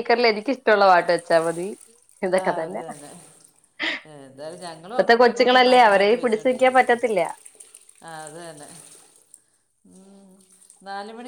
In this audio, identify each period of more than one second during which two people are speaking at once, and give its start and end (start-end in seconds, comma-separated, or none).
4.9-6.8